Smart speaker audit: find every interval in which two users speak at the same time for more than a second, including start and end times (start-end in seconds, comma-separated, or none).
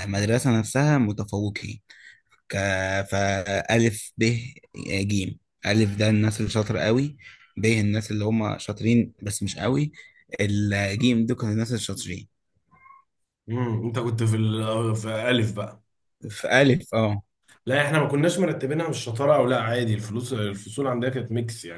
none